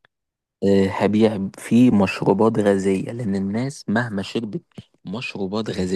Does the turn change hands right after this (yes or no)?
no